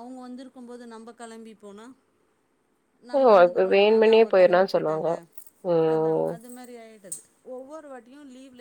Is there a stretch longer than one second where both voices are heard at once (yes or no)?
yes